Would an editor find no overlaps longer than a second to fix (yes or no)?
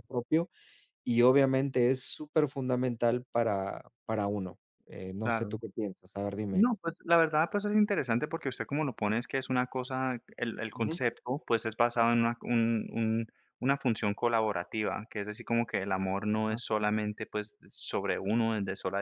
yes